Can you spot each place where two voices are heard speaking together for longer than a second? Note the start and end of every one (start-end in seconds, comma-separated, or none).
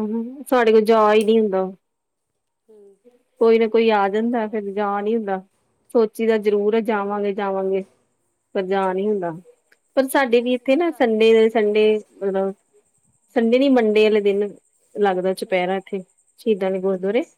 10.3-11.7